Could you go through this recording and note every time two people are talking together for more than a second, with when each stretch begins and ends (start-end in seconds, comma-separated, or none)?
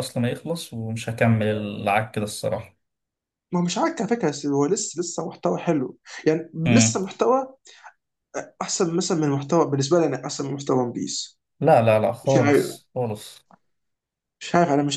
none